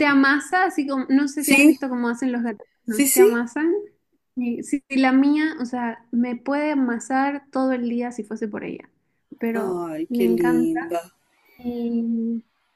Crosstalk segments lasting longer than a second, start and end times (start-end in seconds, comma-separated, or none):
9.5-11.0